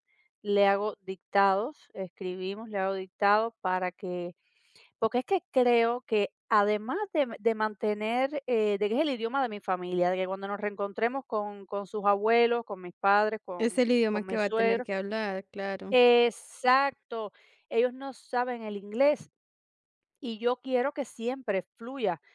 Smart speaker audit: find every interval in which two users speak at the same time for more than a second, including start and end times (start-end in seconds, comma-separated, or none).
13.6-14.9